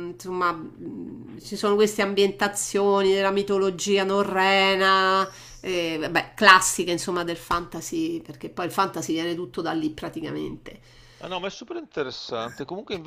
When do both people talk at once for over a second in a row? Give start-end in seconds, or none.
none